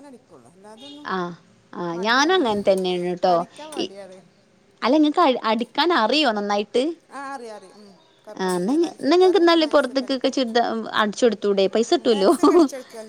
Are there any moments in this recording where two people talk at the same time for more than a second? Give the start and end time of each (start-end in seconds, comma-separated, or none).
8.4-10.4